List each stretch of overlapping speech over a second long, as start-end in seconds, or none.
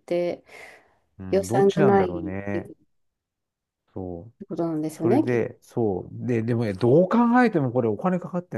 1.3-2.7